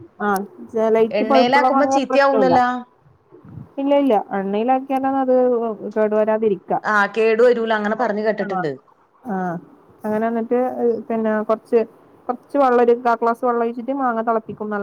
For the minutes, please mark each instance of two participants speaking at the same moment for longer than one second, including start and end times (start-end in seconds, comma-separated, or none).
1.2-2.6